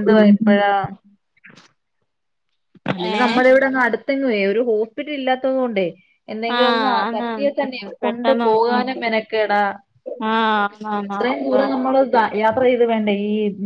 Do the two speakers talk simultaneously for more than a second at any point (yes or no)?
yes